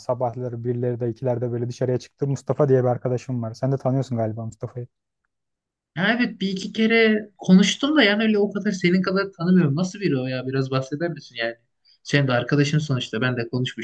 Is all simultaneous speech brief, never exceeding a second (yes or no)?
yes